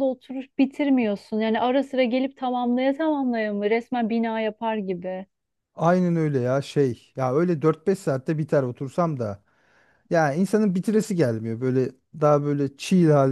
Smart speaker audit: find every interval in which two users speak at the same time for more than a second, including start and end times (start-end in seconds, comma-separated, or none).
none